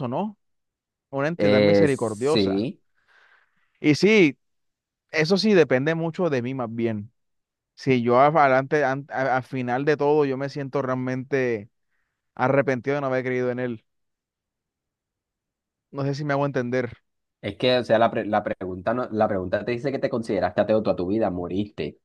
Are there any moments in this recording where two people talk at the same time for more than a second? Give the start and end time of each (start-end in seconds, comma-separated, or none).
1.4-2.7